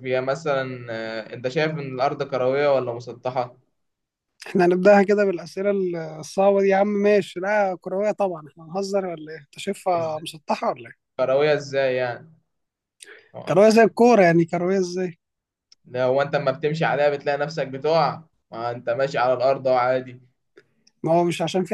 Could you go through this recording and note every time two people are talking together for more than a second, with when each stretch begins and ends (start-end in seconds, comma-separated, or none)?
none